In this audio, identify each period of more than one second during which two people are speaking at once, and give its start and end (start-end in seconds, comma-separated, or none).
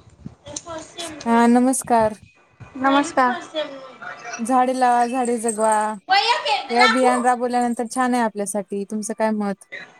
none